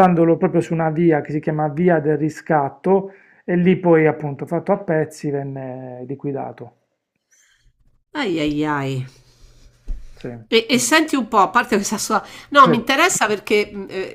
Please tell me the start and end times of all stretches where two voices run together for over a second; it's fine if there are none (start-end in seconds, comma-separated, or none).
none